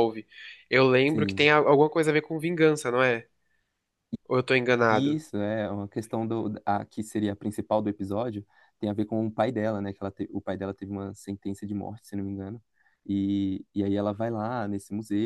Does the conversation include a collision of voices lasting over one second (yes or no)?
no